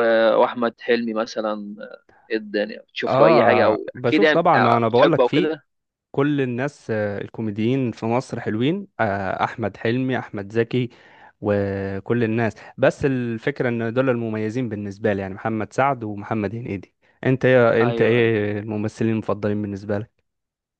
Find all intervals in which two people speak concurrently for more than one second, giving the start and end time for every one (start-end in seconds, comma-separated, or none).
3.1-5.5